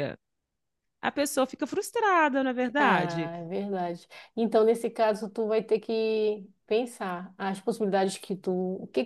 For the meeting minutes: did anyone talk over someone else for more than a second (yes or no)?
no